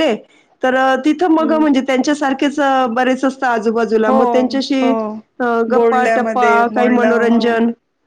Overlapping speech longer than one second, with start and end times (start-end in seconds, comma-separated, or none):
5.7-7.4